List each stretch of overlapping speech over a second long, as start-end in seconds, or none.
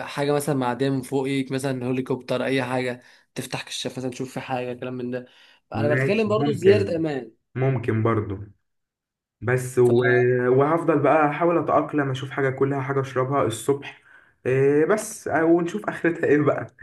5.7-7.0